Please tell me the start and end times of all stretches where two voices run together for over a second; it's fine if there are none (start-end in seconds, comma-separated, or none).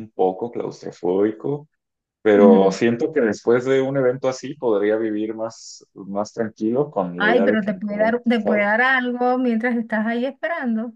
7.2-8.7